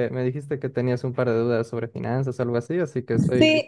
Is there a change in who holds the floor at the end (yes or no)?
yes